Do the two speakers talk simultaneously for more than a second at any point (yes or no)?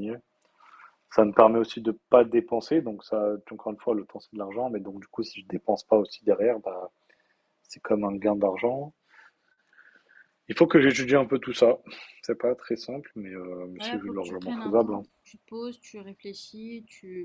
yes